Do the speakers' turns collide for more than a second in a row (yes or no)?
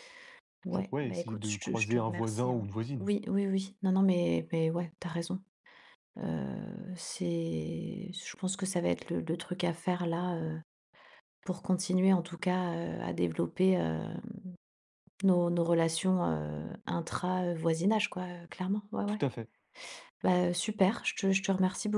yes